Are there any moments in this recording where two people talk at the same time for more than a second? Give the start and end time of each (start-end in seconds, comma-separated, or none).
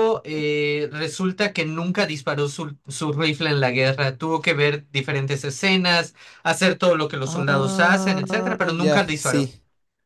7.3-9.5